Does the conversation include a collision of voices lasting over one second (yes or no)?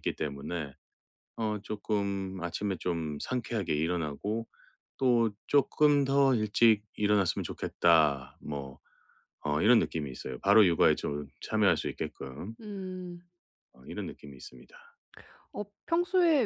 no